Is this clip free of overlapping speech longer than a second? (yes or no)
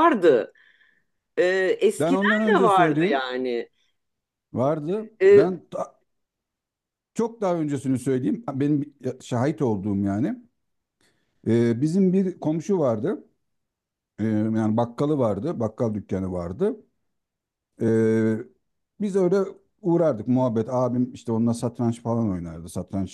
no